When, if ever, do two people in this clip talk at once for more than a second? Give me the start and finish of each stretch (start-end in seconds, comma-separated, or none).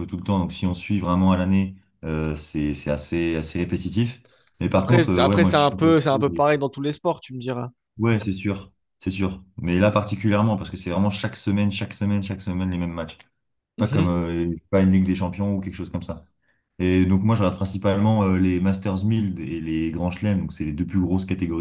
4.7-6.4